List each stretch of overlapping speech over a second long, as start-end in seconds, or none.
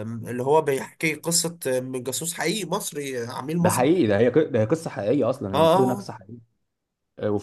none